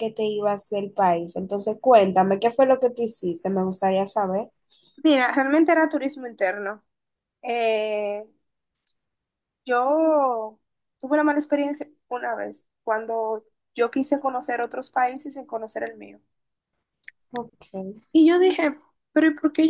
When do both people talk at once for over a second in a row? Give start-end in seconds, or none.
none